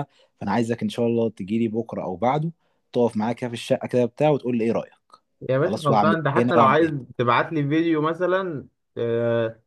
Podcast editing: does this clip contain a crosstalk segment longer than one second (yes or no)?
yes